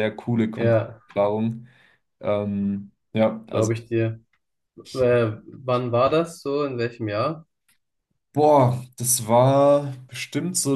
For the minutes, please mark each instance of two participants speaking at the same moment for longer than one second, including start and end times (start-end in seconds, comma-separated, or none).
none